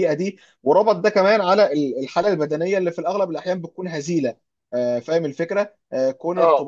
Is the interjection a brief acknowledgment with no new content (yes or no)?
yes